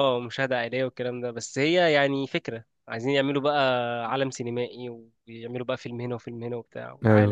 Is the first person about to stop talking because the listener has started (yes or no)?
yes